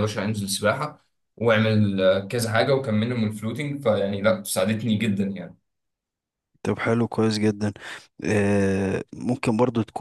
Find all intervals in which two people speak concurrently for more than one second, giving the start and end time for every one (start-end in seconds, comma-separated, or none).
none